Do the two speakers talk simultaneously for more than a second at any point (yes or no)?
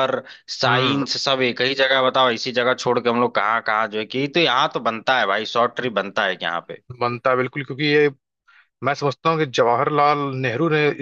no